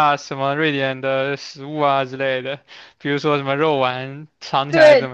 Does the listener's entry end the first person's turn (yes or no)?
yes